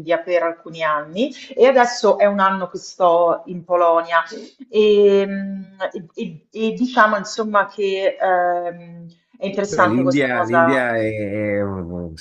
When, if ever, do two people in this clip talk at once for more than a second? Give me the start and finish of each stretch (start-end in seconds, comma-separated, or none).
9.7-10.9